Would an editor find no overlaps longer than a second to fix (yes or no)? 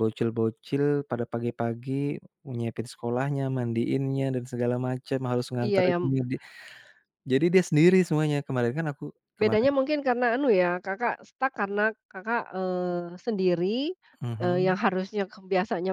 yes